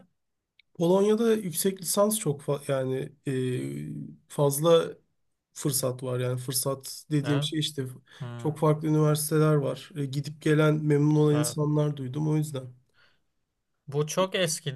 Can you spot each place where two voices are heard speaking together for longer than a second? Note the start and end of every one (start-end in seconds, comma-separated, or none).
none